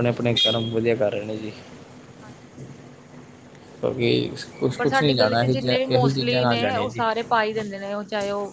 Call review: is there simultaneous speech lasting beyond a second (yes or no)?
no